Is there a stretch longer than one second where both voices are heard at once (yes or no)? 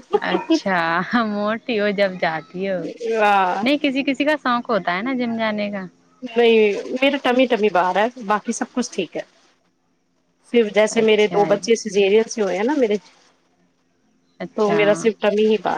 no